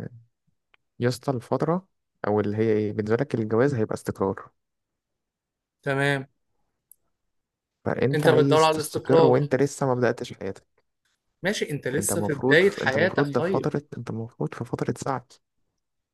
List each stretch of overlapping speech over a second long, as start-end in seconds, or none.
8.1-9.3, 12.0-13.7